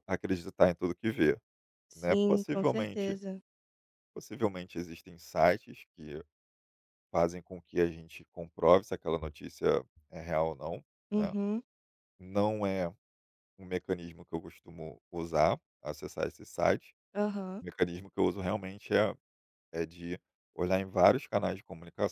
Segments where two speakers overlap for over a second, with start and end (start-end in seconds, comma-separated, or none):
1.9-3.2